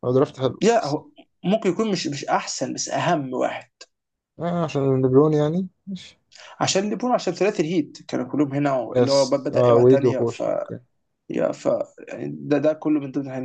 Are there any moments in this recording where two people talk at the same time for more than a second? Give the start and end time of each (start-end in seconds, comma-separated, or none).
8.9-10.4